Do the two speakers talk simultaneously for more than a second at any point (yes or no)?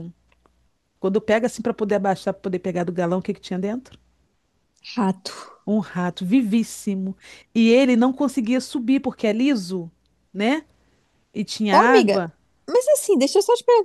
no